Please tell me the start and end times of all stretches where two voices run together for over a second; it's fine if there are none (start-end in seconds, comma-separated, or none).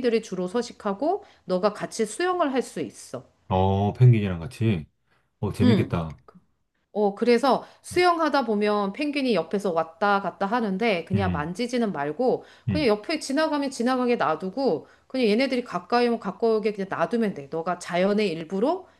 none